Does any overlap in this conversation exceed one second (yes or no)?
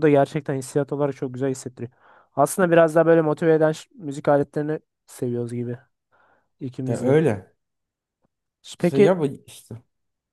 no